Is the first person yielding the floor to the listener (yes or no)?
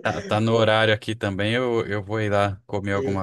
no